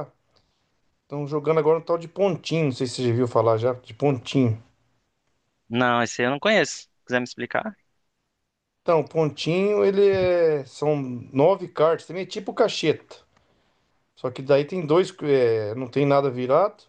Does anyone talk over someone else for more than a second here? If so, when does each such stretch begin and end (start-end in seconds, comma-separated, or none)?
none